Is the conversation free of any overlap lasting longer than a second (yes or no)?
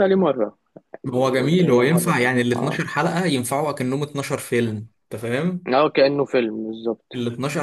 no